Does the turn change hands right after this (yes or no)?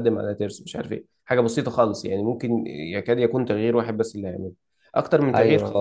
no